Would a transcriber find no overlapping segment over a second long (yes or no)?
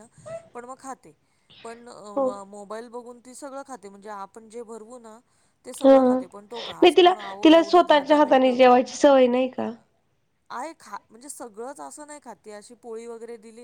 no